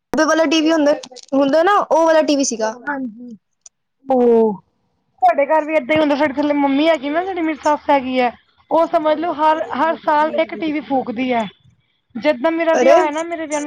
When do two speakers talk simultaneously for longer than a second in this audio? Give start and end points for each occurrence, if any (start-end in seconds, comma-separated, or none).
none